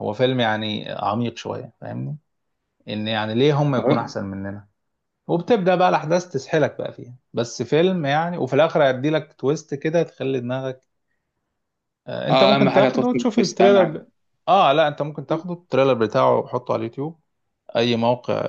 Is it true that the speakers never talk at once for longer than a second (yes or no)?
no